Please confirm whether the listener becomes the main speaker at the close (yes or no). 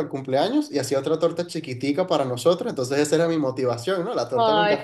yes